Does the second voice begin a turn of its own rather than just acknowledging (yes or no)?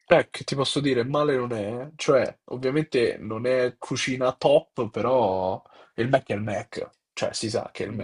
yes